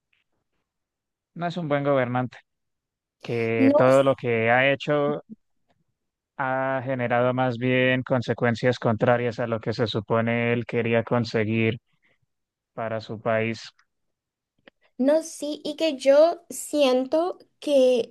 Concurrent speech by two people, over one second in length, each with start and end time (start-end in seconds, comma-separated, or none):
none